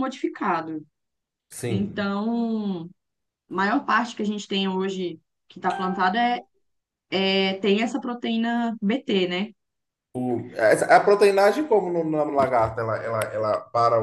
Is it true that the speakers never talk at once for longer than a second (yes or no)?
yes